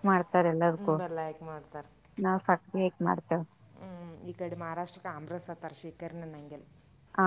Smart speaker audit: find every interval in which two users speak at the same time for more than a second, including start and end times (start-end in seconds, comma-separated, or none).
none